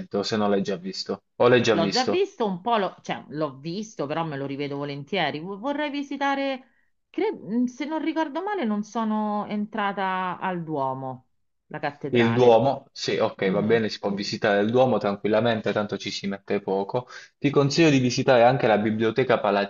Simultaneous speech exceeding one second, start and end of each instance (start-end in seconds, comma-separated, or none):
none